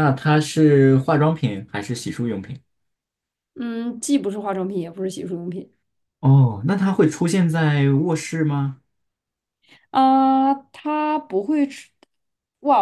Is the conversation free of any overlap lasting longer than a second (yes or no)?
yes